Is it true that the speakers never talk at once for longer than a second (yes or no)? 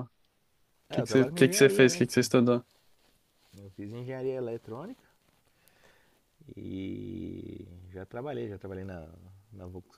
no